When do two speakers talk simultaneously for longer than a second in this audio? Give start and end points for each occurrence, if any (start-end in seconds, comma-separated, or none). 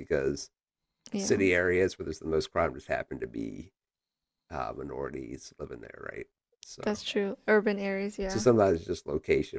none